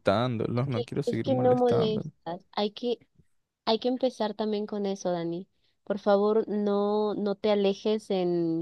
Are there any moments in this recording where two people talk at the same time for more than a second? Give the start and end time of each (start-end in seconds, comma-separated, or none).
0.6-2.1